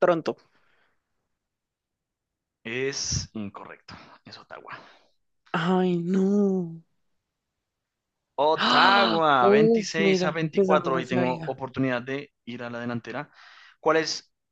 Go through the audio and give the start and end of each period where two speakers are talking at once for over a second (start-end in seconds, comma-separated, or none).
8.7-11.6